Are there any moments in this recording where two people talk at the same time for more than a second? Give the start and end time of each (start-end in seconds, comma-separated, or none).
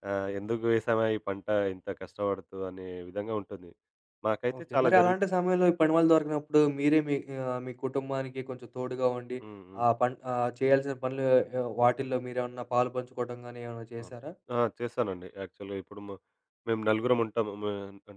none